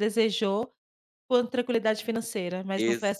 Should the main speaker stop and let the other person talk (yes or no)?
yes